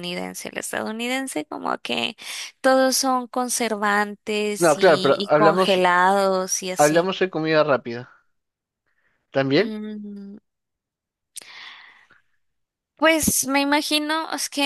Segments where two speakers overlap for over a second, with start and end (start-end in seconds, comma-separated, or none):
4.6-5.8